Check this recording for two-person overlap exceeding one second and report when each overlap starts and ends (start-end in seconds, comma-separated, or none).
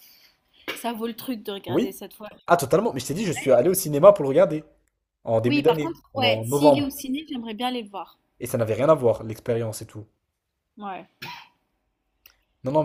5.5-6.8